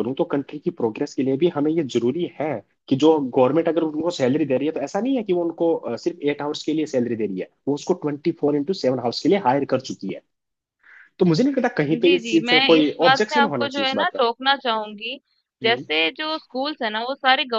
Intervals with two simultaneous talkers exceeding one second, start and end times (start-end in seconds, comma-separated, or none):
11.9-14.2